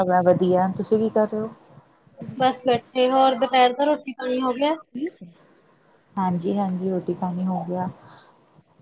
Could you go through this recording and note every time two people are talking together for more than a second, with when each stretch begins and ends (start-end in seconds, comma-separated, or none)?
none